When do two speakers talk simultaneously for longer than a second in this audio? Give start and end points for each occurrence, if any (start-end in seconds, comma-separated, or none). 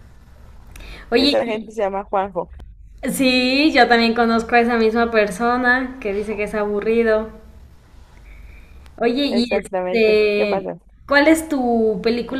9.3-10.7